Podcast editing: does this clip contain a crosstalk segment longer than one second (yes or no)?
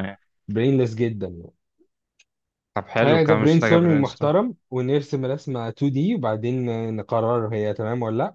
yes